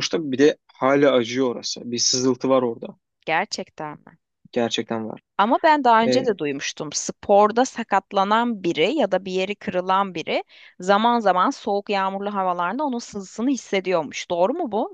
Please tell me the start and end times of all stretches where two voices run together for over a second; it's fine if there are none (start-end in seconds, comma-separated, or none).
none